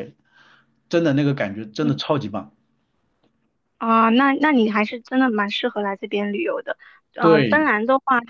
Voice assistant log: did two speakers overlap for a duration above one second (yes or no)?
no